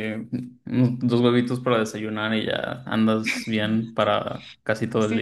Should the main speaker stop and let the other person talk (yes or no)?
yes